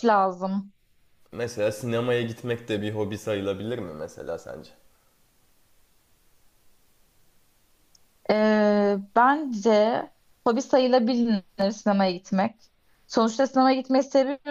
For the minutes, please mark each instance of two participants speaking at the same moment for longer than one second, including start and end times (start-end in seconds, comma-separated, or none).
none